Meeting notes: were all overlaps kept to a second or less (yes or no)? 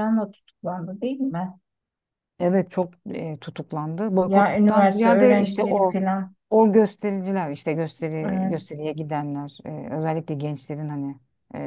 no